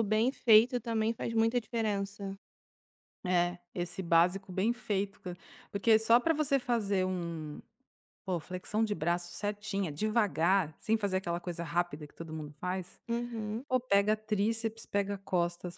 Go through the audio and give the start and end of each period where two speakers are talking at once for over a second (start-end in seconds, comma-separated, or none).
none